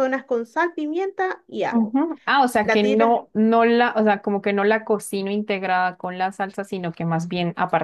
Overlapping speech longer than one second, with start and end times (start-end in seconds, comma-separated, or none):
none